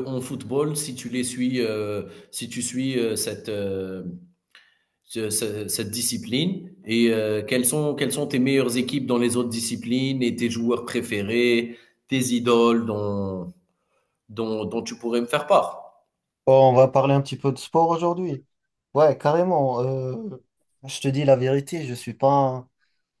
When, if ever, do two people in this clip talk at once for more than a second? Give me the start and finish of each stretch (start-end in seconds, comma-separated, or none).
none